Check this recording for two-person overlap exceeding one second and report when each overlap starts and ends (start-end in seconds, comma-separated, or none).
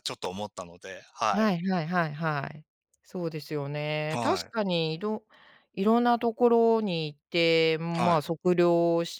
none